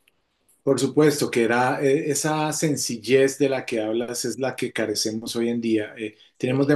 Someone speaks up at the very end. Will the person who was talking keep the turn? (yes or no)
yes